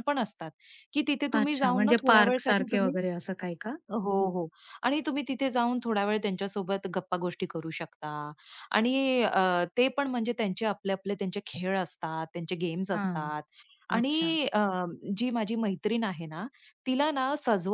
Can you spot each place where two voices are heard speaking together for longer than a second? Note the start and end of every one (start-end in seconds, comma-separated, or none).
1.4-2.9